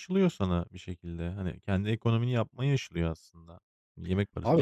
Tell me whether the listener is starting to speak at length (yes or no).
yes